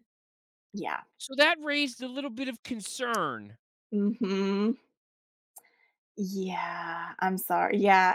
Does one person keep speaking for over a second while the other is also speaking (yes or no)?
no